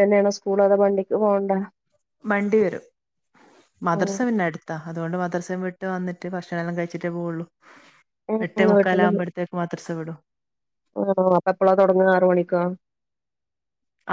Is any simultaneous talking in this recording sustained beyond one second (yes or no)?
no